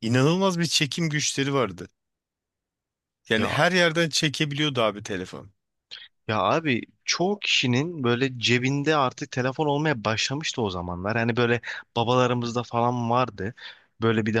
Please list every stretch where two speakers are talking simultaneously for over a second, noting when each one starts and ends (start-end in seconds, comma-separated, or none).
none